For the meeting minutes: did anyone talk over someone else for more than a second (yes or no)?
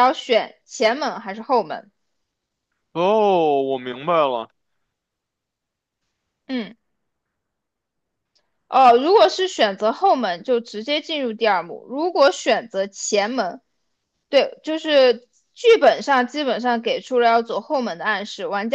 no